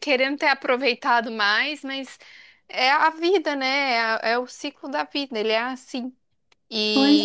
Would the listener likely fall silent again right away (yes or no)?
no